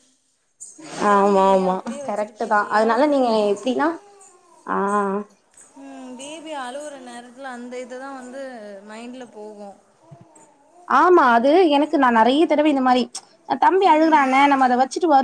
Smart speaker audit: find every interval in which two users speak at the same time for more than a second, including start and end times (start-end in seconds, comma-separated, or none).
1.1-3.4